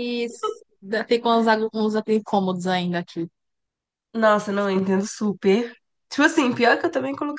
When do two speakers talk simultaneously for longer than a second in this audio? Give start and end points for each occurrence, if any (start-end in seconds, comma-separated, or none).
none